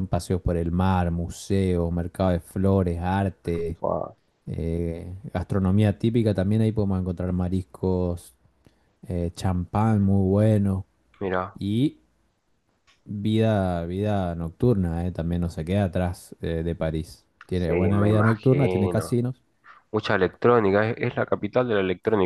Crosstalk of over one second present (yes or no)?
yes